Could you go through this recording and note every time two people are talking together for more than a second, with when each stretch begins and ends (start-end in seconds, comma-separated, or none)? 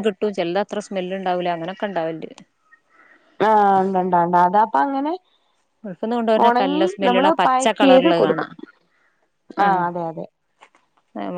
6.5-8.4